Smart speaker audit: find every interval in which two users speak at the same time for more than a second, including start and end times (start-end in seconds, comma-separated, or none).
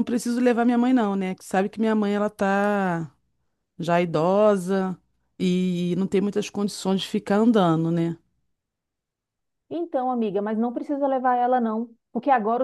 none